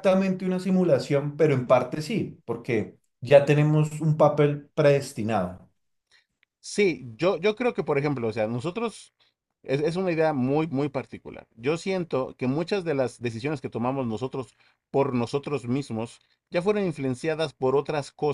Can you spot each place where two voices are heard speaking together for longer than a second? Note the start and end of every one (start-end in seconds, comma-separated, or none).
none